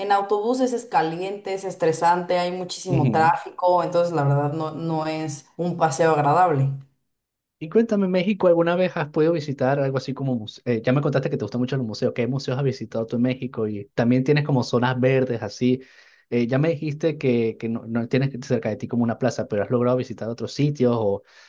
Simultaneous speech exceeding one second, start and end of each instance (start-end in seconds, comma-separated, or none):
none